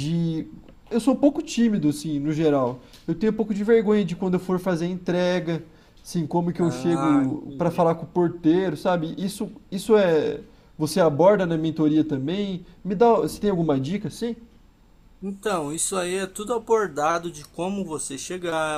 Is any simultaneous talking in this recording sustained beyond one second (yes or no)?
yes